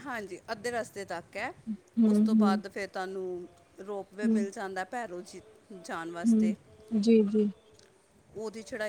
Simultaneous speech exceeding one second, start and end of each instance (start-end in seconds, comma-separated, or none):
none